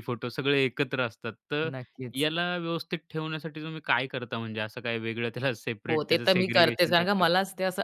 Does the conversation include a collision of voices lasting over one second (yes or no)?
yes